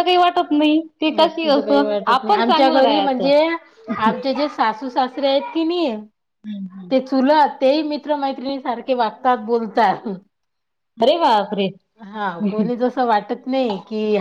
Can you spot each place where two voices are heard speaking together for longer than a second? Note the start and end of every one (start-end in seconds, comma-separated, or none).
1.2-3.3